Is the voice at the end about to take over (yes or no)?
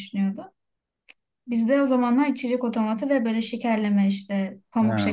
no